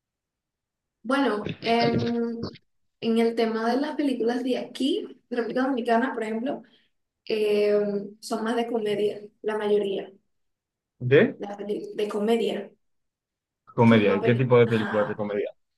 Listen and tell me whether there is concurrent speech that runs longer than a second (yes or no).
yes